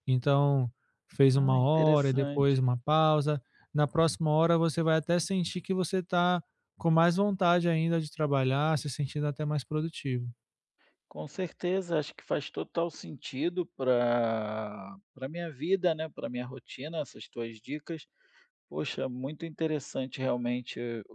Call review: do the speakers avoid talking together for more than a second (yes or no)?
no